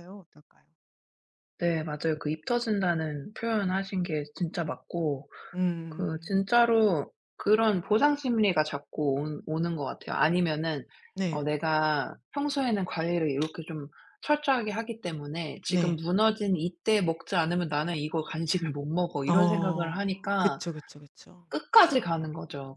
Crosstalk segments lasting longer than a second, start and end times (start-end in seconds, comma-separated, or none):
19.3-20.6